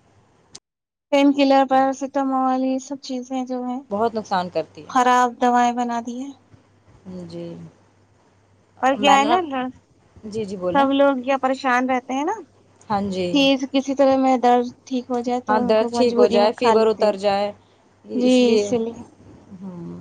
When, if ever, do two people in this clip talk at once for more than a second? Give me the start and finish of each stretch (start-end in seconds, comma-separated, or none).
15.5-17.2